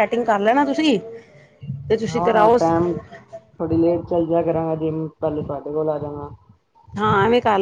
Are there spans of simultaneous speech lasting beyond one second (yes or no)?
no